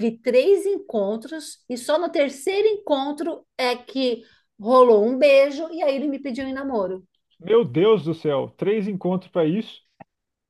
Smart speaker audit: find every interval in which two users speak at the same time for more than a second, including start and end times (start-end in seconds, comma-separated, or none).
none